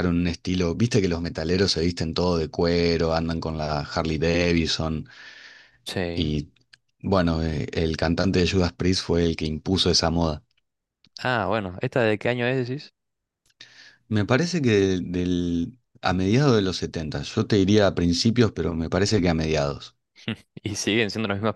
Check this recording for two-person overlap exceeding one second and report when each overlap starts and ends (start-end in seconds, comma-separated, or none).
none